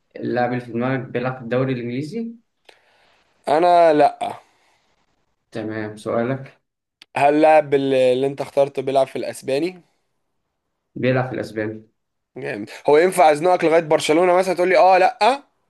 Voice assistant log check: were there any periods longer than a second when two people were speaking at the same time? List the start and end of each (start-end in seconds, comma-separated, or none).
none